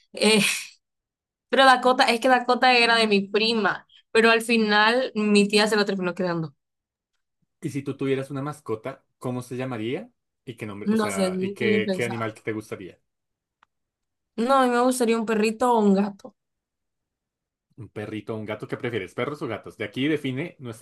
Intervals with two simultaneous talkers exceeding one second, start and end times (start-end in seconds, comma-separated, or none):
10.8-12.4